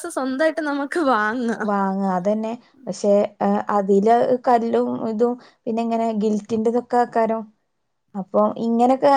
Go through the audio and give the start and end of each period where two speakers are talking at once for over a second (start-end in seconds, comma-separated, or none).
none